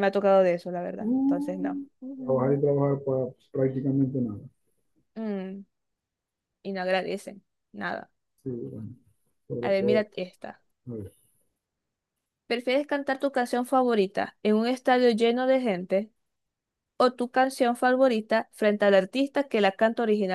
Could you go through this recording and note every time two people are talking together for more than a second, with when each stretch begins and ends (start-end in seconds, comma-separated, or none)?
1.0-2.7